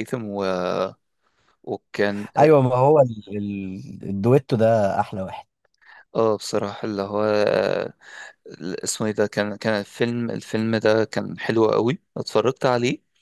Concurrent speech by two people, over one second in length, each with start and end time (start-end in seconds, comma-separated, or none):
none